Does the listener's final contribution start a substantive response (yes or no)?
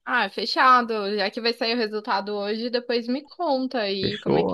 yes